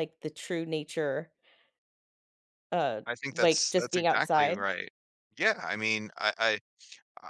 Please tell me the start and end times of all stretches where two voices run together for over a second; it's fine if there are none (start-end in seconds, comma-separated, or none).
3.1-4.6